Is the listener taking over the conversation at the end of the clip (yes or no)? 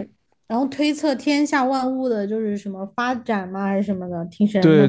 yes